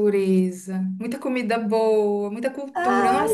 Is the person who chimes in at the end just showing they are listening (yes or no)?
yes